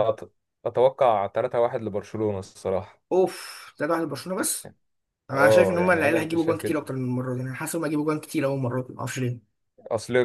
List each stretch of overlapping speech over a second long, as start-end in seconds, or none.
5.3-6.8